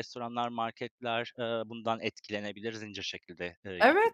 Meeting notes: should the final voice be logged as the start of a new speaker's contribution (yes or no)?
yes